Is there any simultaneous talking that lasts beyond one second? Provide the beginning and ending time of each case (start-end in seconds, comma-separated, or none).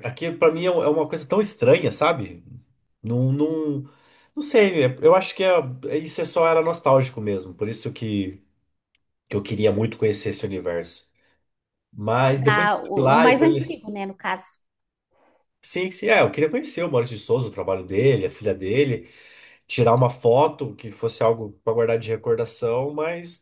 12.3-13.9